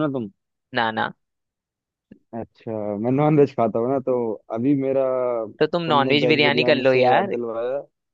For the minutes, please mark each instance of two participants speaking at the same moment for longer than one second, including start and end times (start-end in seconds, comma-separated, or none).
5.9-7.3